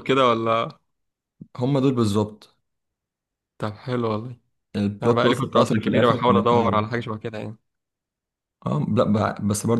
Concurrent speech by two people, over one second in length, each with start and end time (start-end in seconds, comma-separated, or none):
5.0-6.9